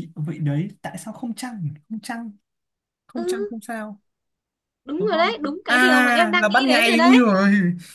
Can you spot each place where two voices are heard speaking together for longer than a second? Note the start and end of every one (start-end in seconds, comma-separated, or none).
5.0-7.3